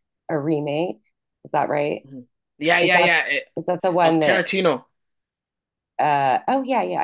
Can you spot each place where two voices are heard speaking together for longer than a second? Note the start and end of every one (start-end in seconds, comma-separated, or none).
none